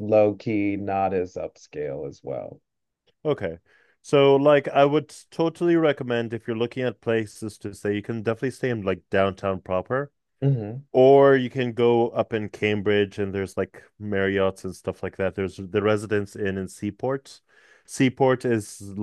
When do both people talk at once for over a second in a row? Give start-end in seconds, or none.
none